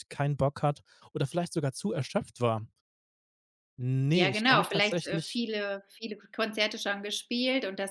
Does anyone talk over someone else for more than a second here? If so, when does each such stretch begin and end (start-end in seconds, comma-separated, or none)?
4.1-5.4